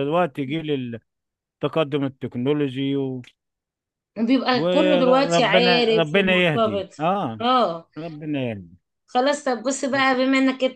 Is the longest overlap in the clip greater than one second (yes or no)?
yes